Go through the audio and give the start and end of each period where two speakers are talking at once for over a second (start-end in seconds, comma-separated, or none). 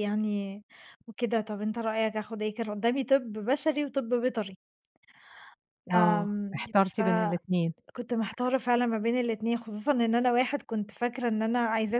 5.9-7.7